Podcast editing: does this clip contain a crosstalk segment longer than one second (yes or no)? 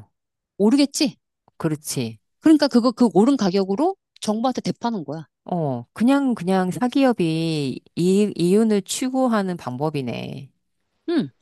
no